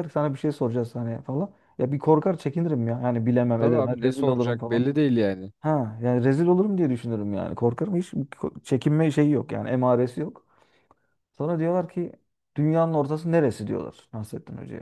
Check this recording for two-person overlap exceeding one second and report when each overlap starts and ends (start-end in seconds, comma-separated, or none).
3.6-4.8